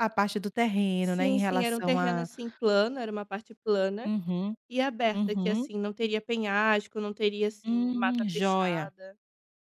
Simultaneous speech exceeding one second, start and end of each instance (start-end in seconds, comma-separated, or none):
1.0-2.3, 7.6-8.9